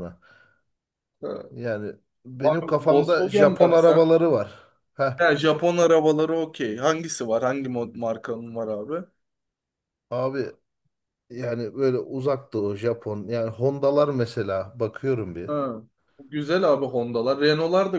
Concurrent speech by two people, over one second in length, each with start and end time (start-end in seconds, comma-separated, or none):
2.6-4.1